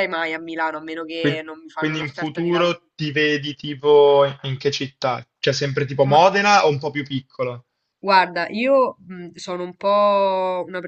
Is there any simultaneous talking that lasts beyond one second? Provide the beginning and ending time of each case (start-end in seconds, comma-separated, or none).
1.2-2.8